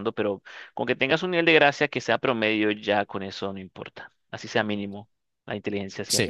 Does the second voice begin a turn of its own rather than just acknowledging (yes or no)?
yes